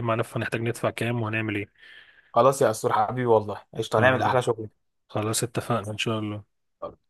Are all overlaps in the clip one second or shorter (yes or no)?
yes